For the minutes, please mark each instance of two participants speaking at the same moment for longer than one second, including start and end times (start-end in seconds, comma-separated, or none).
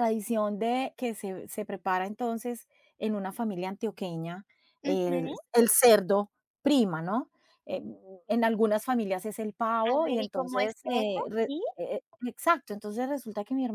9.9-11.6